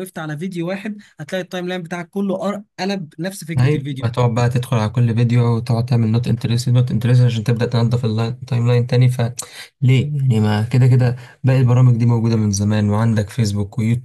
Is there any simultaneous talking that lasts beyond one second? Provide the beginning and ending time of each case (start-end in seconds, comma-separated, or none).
none